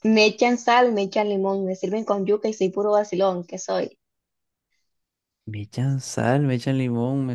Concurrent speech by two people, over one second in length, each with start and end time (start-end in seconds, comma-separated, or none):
none